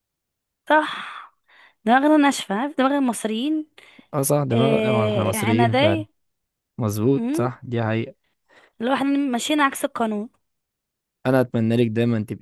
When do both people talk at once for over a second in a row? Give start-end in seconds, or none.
4.5-6.0